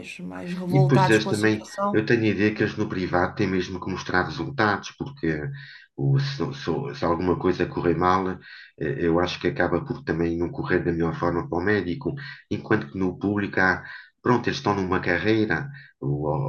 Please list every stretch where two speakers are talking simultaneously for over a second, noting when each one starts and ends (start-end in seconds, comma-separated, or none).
0.7-2.0